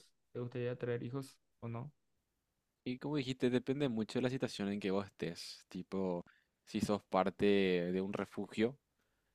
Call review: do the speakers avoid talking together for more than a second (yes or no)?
yes